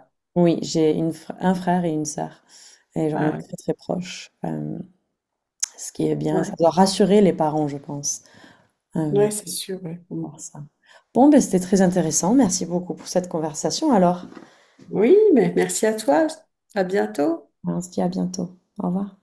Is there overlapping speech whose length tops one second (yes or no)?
no